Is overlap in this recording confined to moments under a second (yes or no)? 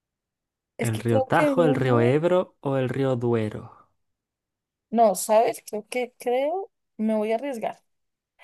no